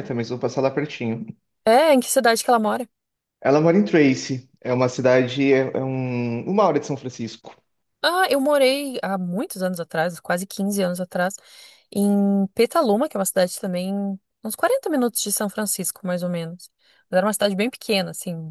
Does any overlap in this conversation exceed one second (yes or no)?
no